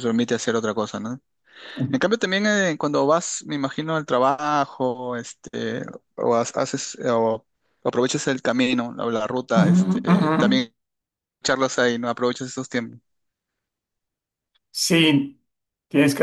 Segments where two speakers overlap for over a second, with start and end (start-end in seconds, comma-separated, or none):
none